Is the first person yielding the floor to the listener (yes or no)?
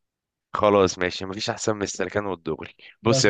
no